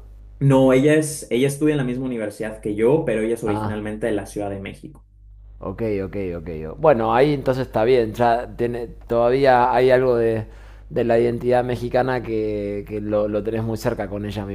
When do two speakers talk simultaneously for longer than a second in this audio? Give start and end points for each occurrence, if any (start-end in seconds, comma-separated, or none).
none